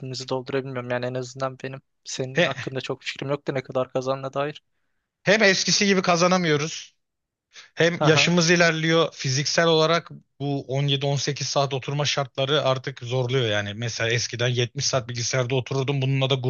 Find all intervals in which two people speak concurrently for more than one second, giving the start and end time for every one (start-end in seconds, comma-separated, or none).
none